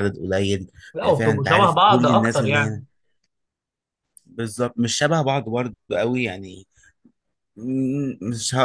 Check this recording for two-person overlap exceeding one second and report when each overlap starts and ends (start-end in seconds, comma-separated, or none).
0.9-2.8